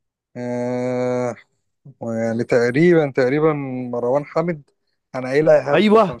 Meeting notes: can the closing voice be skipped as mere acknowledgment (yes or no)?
no